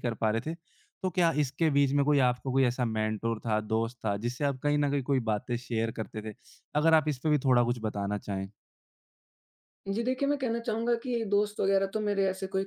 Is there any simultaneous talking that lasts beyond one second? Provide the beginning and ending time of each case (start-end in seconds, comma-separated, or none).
none